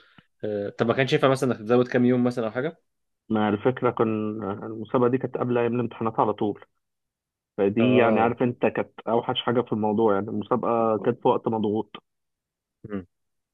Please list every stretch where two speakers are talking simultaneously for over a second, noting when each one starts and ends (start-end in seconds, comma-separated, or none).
none